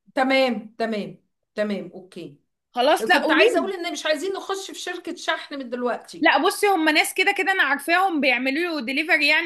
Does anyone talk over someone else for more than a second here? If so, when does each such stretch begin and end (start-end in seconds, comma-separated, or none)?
none